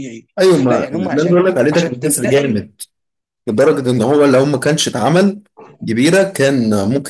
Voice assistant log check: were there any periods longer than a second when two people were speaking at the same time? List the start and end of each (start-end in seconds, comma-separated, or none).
0.7-2.6